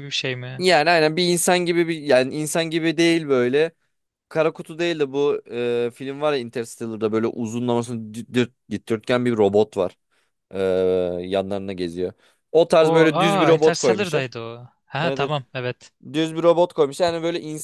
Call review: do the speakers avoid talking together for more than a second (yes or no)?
no